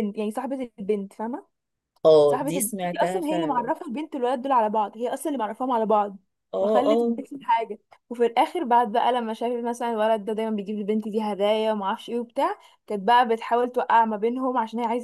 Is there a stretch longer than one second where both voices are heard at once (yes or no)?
yes